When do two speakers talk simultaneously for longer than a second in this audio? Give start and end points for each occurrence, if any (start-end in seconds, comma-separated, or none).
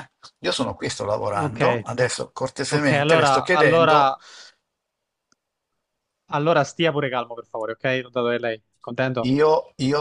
2.7-4.1